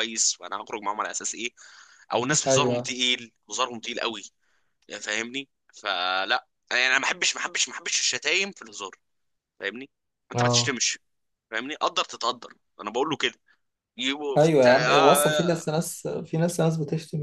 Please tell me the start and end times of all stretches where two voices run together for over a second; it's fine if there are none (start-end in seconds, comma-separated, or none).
14.4-15.7